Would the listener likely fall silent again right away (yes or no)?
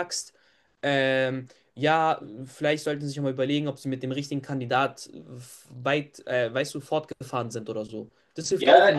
no